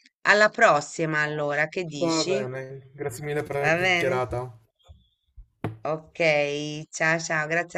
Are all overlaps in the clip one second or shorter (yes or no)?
yes